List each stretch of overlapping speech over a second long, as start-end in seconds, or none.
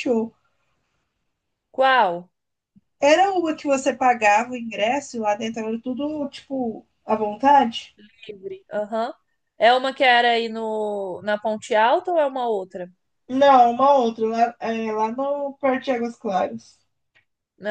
none